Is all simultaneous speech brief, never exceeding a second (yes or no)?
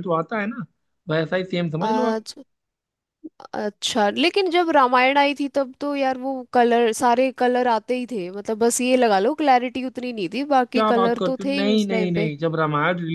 no